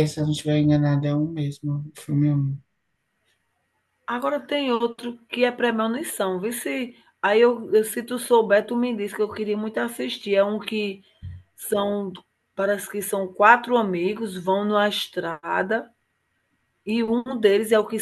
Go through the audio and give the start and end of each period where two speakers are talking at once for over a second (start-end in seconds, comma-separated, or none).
none